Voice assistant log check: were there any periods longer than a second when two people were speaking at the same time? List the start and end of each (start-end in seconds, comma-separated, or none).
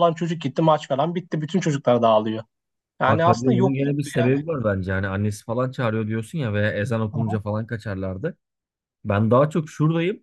3.1-4.3